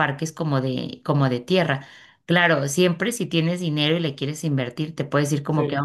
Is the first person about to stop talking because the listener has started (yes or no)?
no